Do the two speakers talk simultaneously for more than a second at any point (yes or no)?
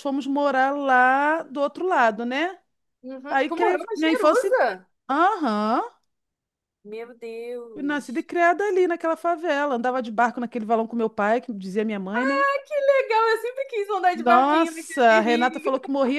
yes